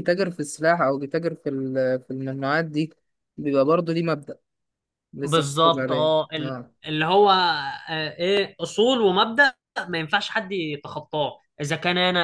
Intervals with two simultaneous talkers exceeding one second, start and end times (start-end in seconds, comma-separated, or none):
5.2-6.7